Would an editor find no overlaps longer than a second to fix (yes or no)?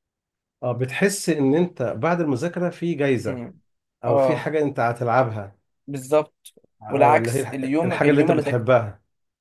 no